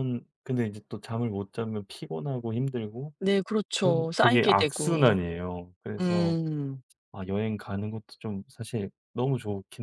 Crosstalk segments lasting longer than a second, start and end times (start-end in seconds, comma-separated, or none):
3.8-5.2